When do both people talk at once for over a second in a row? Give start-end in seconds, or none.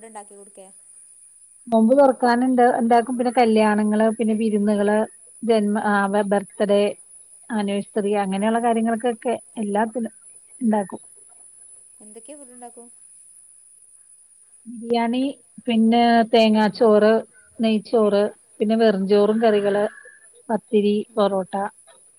none